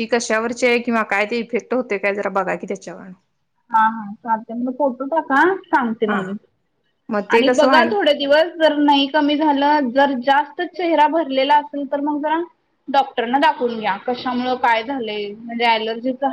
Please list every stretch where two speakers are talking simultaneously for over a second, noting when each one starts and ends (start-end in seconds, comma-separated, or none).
none